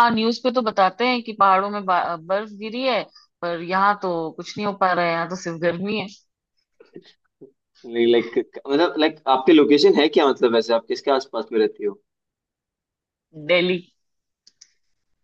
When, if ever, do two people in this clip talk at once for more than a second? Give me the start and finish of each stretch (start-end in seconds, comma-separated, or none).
none